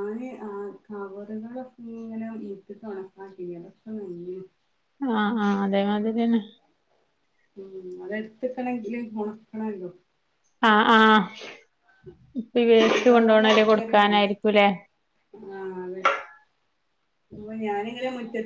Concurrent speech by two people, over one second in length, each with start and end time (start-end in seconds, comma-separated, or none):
12.9-14.3